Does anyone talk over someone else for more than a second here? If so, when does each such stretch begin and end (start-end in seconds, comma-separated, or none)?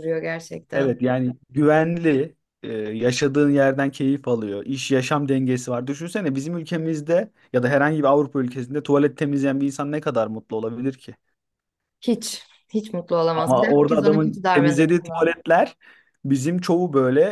13.3-15.3